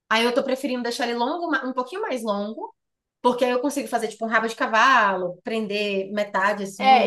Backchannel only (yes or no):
no